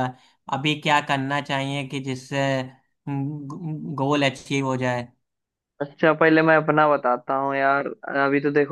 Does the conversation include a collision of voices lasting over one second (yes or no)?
no